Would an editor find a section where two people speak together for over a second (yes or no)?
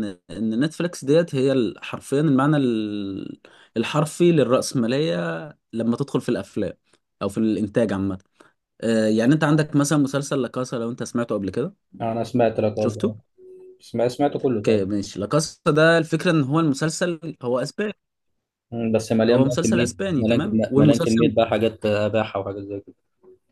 yes